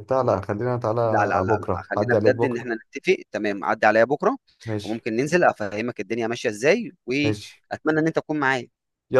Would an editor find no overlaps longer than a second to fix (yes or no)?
no